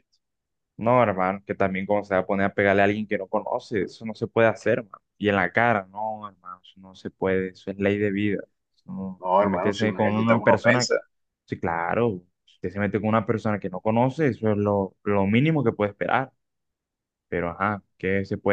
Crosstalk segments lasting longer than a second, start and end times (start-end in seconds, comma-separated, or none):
9.2-10.9